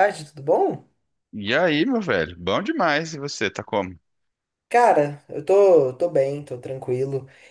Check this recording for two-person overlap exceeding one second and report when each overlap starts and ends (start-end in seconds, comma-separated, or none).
none